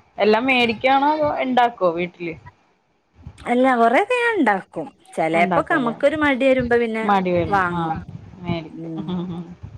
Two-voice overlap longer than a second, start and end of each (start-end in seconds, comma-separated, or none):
none